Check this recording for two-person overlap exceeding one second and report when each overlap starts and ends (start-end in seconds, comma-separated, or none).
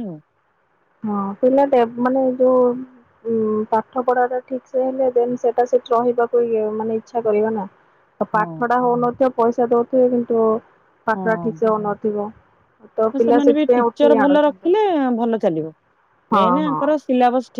13.2-14.7